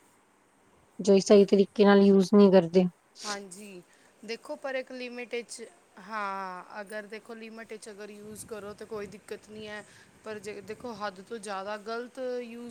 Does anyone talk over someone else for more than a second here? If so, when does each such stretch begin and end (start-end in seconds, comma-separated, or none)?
none